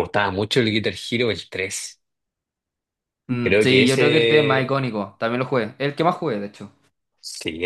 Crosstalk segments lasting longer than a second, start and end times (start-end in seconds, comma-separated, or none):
3.4-5.0